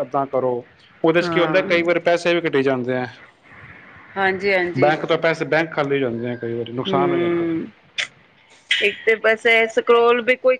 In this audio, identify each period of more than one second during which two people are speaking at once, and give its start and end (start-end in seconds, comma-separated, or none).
none